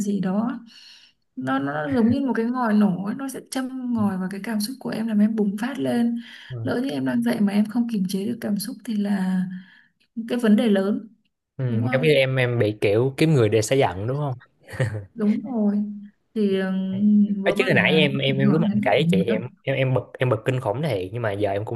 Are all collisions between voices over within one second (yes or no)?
no